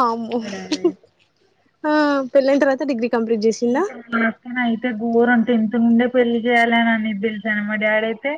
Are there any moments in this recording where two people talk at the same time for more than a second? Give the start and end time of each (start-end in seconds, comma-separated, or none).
none